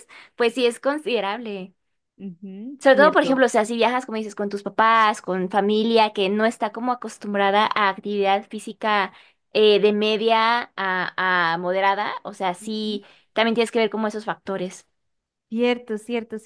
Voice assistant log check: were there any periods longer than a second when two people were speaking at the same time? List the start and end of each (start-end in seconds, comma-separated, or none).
none